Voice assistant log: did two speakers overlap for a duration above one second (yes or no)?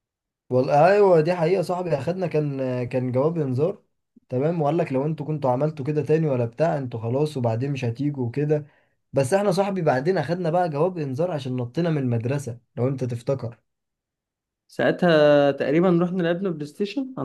no